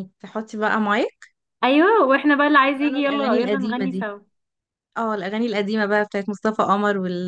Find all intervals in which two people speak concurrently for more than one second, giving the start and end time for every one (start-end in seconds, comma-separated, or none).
2.7-4.1